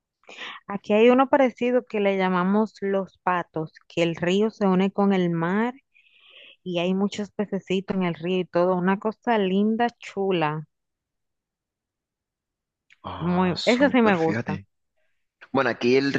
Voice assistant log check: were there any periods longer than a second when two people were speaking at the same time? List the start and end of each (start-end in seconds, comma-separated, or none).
13.2-14.6